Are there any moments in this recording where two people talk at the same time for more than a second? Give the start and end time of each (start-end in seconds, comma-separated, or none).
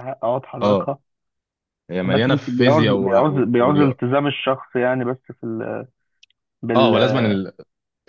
2.0-4.0